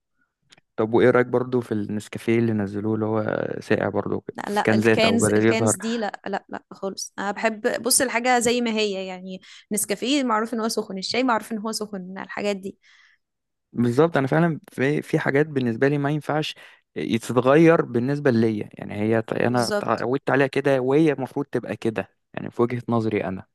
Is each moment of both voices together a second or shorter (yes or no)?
no